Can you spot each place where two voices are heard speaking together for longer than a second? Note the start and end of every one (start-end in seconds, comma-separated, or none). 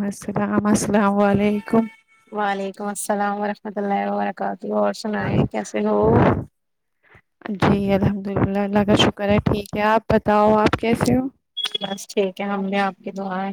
none